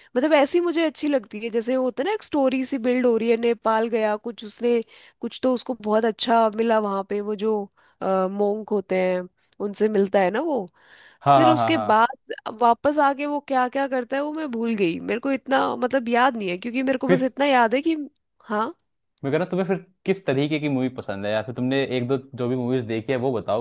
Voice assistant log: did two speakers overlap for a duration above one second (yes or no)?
no